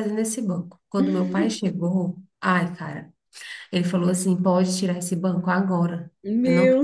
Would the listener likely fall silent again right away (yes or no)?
yes